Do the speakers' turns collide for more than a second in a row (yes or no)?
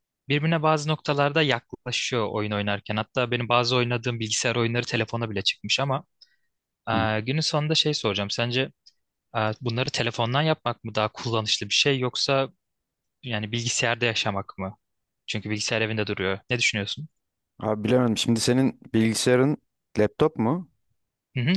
no